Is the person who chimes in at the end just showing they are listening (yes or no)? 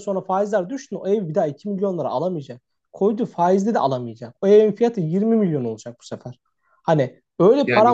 yes